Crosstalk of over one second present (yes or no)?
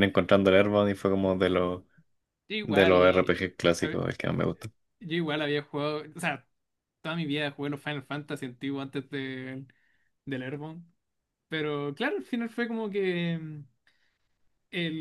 yes